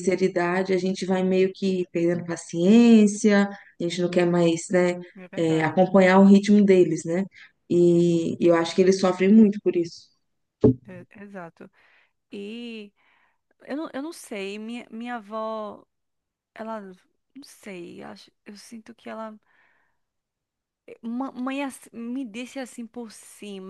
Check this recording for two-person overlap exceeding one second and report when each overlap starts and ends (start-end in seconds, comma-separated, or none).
none